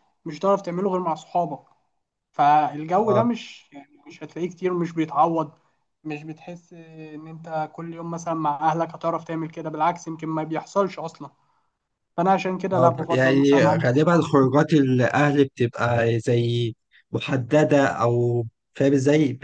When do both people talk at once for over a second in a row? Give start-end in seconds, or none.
12.7-14.3